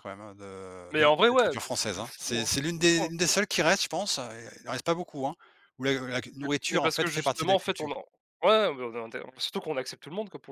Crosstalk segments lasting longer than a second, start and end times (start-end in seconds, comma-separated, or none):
0.9-3.1, 6.4-7.9